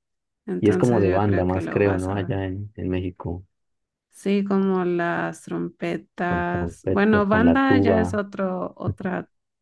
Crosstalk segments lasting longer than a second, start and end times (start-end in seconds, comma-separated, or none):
0.6-2.3, 6.2-8.2